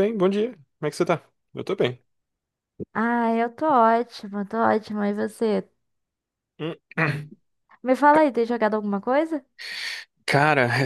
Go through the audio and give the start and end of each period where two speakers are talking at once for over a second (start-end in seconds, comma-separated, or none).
none